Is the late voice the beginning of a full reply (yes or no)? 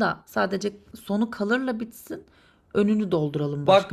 yes